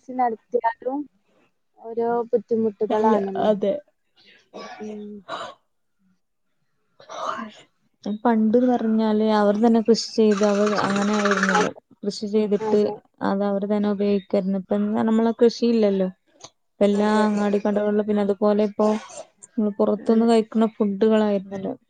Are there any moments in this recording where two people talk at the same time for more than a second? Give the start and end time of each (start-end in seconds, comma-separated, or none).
none